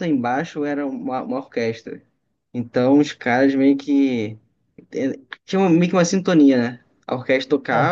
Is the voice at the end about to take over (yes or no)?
no